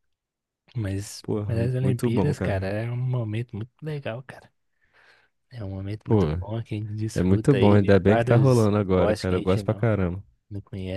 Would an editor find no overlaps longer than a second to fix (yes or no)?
no